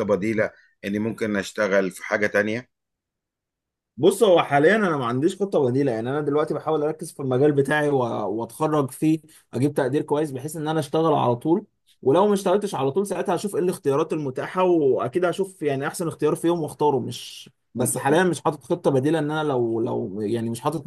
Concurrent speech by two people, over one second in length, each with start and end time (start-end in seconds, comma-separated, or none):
none